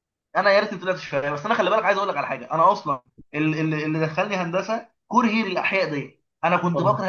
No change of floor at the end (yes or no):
yes